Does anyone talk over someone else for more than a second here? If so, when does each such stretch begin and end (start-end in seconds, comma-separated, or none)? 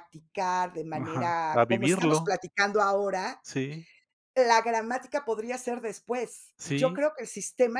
1.0-2.3